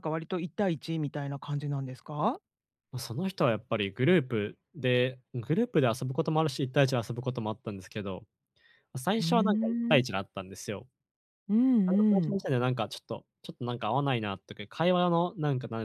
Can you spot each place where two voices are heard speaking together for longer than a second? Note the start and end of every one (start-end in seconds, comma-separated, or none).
none